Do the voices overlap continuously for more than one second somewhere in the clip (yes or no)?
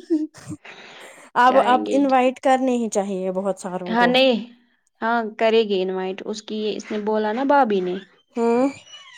no